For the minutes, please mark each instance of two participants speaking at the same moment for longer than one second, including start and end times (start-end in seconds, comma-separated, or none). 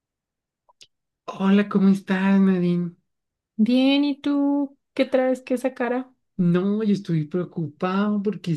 none